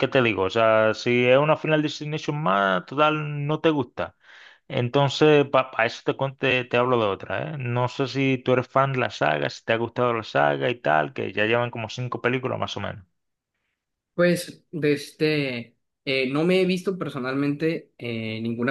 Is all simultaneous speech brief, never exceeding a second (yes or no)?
yes